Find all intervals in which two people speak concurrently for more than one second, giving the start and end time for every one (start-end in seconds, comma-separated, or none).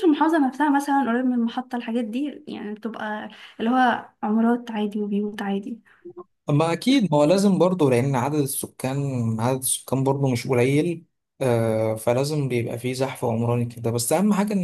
none